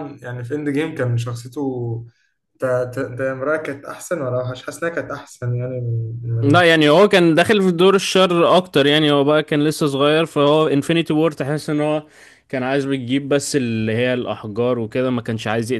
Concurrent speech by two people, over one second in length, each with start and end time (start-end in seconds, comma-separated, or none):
none